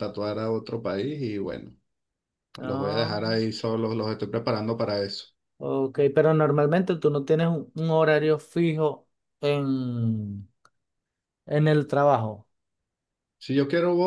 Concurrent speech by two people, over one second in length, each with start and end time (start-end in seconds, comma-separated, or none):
none